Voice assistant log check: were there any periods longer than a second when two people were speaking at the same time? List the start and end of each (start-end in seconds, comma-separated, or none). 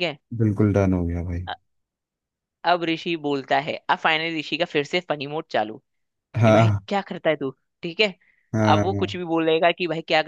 none